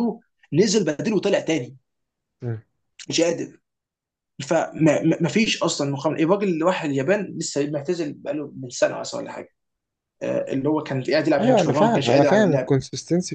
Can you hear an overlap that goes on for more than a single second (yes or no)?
yes